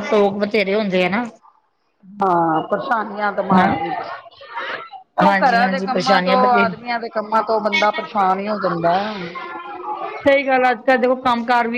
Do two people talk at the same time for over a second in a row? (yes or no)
yes